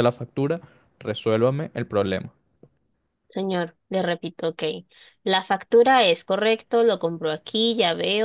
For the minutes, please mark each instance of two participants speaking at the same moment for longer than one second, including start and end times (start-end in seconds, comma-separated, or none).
none